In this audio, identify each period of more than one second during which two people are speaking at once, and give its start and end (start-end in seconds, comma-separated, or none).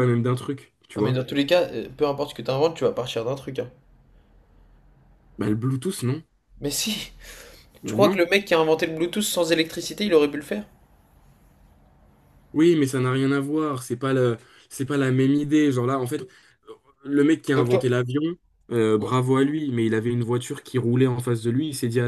none